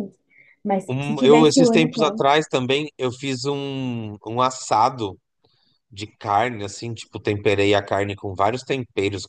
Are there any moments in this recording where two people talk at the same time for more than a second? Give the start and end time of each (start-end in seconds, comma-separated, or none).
0.9-2.2